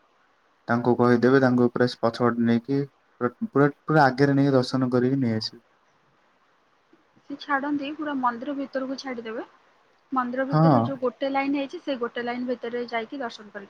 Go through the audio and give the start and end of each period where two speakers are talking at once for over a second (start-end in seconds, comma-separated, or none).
none